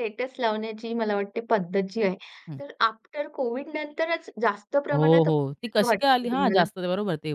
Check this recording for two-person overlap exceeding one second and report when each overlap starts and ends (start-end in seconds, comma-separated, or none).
4.9-6.6